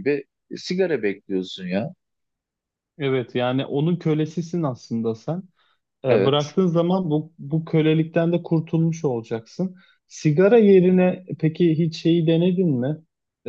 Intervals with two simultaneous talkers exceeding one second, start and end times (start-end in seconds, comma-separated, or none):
none